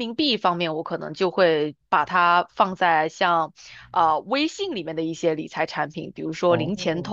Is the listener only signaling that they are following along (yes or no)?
yes